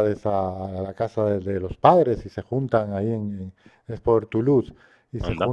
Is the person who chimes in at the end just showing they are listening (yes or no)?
yes